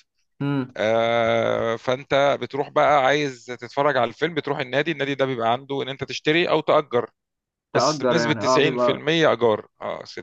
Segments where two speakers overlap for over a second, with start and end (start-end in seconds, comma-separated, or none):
7.7-9.1